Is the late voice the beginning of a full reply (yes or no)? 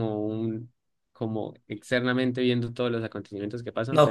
yes